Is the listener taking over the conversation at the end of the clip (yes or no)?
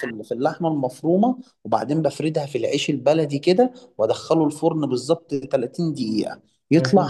no